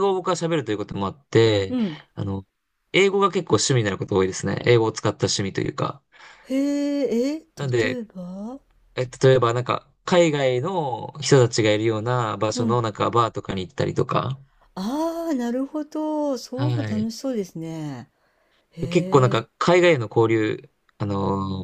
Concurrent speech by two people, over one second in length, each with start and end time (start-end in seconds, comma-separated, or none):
none